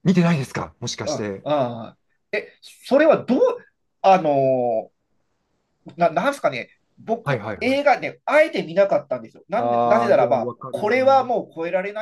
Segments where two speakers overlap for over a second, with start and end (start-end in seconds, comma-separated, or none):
9.6-11.3